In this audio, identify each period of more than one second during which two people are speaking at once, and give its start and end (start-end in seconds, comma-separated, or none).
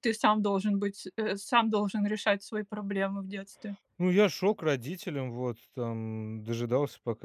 none